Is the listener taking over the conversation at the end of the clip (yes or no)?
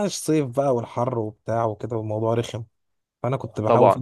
no